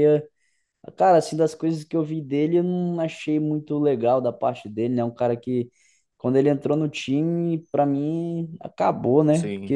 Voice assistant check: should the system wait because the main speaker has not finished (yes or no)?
yes